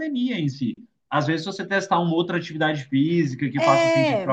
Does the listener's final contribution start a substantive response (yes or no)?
no